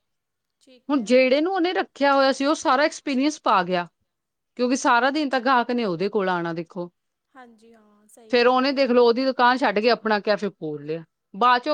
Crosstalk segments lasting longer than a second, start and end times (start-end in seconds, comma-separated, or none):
none